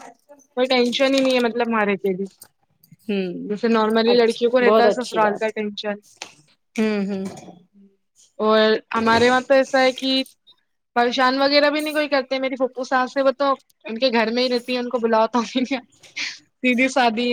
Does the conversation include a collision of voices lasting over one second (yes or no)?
yes